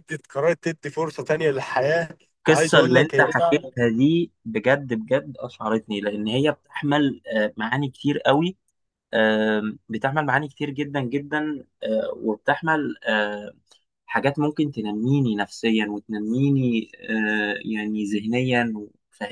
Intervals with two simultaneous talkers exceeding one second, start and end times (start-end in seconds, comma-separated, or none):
2.5-3.7